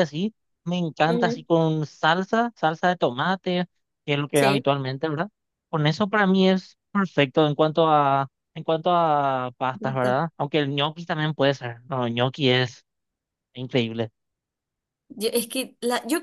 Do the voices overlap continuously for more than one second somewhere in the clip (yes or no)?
no